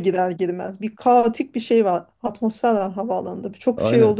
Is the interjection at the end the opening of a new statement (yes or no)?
no